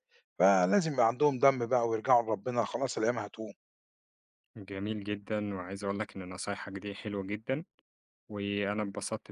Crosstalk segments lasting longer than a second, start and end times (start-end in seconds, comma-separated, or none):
none